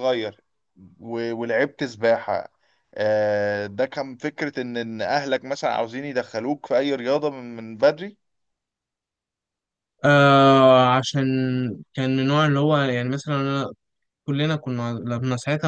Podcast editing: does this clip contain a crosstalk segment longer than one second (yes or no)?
no